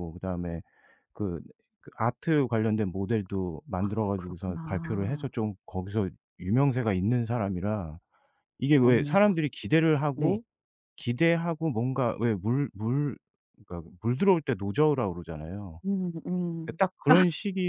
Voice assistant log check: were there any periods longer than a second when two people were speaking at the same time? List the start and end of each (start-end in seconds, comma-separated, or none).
3.8-5.2